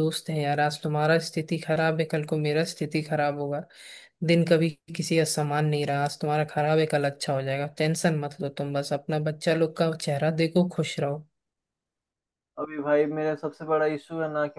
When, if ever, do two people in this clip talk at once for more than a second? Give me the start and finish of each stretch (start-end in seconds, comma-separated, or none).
none